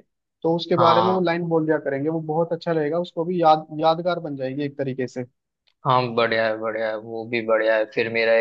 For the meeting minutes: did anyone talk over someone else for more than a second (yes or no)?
no